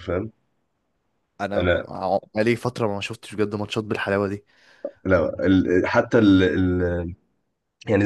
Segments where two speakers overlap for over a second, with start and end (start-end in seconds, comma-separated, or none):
none